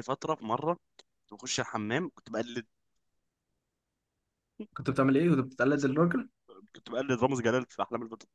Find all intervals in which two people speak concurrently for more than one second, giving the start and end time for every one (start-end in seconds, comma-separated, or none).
none